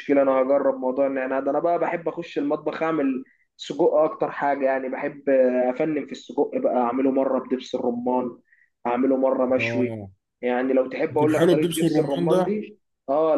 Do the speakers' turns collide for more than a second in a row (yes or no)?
yes